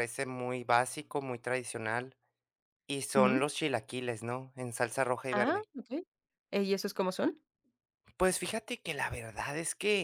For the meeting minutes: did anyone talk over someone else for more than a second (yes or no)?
no